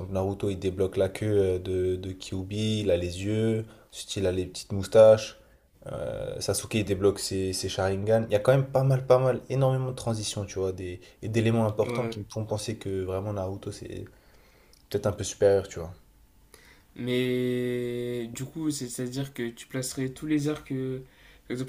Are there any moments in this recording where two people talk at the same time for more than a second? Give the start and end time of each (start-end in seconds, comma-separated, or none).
none